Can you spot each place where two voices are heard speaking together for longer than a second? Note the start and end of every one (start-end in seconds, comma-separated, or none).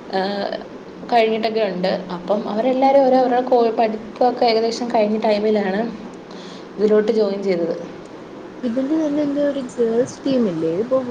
none